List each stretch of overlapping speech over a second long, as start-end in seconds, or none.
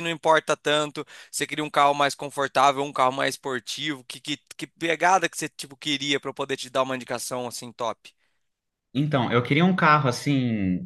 none